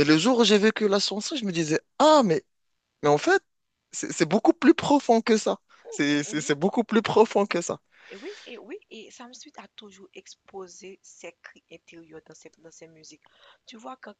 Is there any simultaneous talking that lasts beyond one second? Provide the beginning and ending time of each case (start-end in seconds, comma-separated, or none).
none